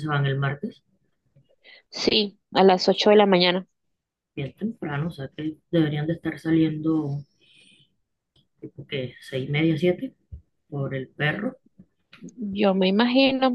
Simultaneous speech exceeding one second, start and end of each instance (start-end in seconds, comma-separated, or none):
none